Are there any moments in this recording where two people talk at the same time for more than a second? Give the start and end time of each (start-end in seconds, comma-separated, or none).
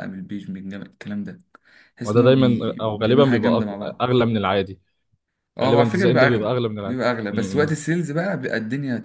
2.0-4.1, 5.6-7.8